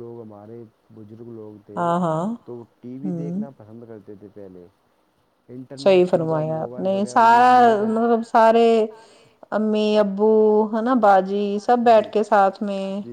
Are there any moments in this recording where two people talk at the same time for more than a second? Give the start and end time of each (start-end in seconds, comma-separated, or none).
5.8-7.9